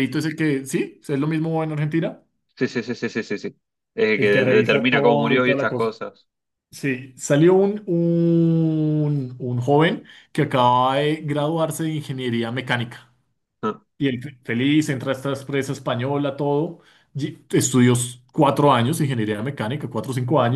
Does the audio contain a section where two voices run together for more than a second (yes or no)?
yes